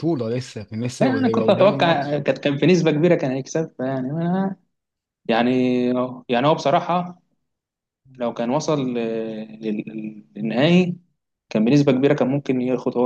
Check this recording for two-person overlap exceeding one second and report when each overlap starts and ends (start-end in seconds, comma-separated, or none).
1.0-2.2